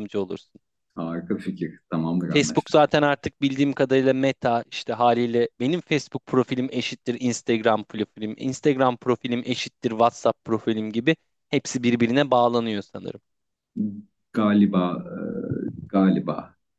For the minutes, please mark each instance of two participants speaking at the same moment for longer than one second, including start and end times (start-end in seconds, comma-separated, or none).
none